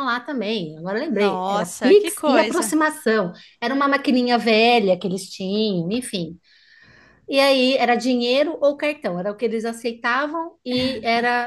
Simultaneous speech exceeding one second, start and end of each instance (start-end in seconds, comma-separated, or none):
1.1-2.7